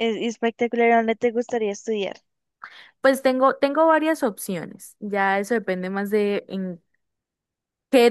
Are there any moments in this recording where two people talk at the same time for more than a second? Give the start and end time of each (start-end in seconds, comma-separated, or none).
none